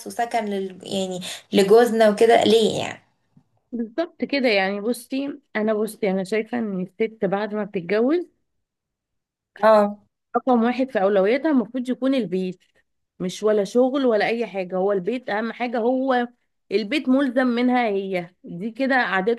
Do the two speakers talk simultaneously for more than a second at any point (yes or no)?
no